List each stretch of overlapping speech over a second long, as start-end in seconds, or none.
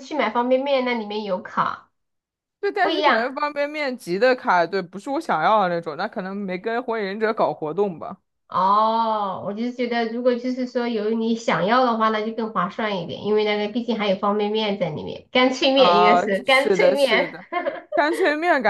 15.7-17.4